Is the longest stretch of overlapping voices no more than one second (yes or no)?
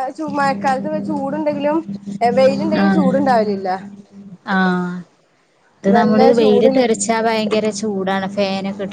yes